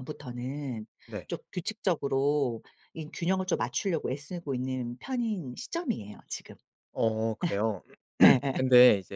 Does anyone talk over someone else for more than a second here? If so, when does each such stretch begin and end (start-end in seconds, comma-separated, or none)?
none